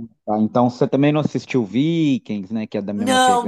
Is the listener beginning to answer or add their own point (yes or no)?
yes